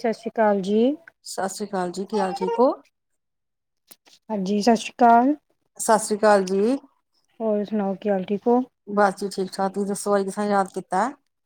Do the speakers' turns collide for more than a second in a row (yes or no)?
no